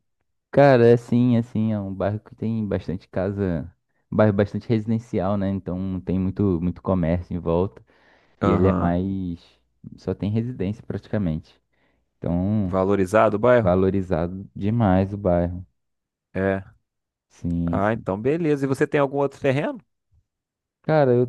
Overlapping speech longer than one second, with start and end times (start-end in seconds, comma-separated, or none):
none